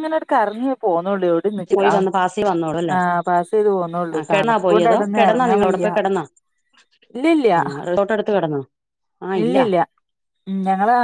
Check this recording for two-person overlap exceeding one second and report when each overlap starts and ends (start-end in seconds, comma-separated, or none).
4.1-5.9